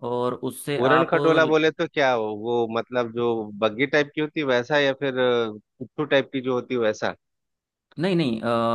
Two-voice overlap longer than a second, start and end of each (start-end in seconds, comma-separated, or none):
none